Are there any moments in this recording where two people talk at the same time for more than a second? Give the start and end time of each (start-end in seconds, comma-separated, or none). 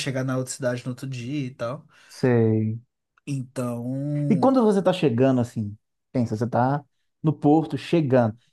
none